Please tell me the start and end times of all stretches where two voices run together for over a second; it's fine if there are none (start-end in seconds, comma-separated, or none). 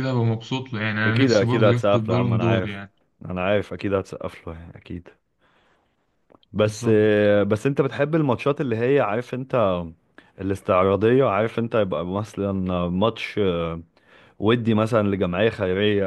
1.1-2.8